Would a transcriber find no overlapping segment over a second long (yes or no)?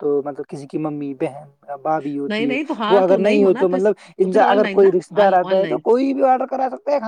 no